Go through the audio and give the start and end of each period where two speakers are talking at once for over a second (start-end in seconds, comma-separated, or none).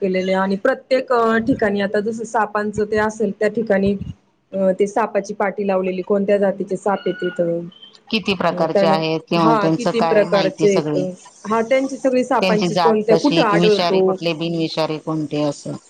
9.4-11.0, 12.4-14.1